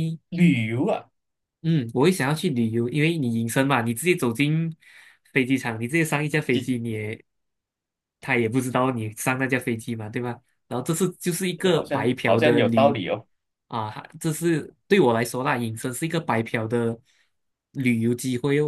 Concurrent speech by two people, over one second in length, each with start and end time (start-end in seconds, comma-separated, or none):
11.7-13.0